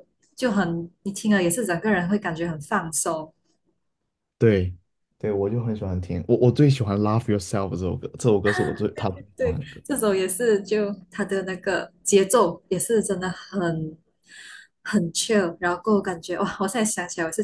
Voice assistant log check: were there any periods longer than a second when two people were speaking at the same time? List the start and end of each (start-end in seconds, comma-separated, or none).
none